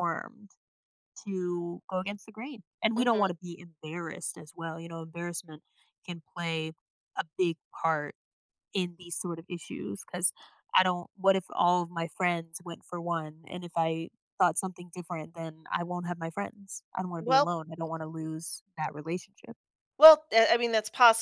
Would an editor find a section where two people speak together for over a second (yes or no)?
no